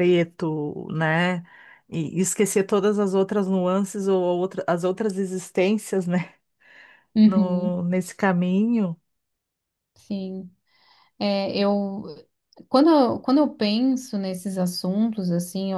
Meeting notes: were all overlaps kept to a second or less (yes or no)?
yes